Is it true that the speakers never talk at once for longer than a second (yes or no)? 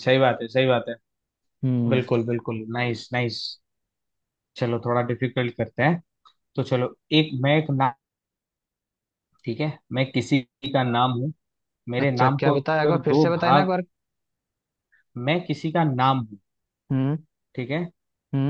no